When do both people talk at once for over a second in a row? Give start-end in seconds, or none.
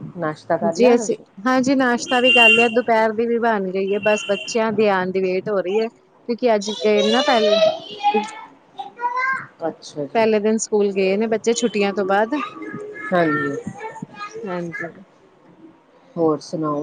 none